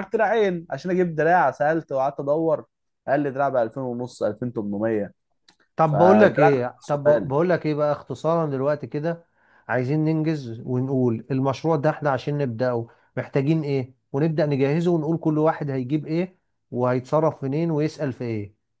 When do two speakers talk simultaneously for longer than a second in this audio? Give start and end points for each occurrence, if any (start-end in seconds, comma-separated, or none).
5.9-7.3